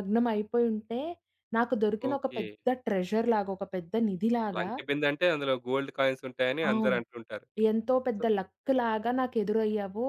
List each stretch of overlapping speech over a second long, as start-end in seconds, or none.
none